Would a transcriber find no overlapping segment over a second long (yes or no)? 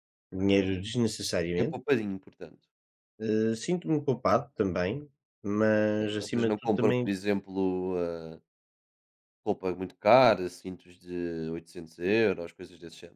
no